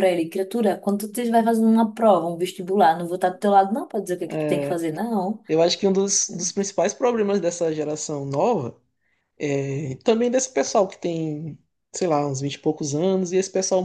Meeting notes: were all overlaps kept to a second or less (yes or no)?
yes